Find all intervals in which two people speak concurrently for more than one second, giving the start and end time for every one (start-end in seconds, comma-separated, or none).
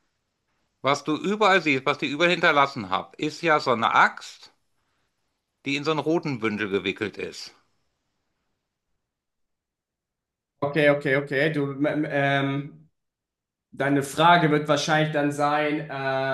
none